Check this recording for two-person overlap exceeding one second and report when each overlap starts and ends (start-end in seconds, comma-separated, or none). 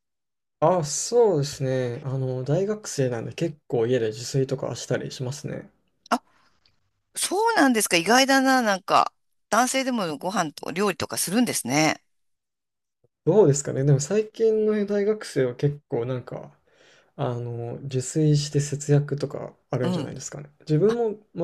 none